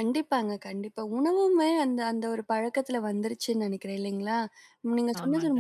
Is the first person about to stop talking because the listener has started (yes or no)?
no